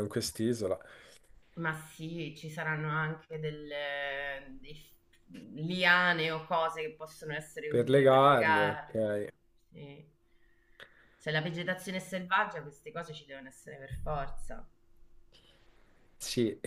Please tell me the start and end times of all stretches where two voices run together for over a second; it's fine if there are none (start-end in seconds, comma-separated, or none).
7.7-9.2